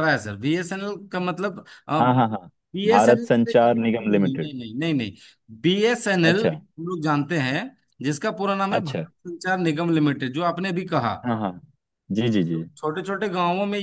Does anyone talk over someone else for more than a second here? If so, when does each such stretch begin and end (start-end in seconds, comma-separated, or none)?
2.9-4.5